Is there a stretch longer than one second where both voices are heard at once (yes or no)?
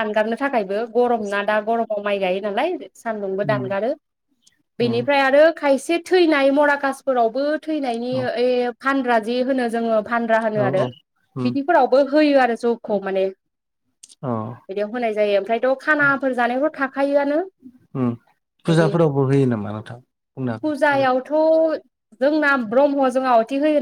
no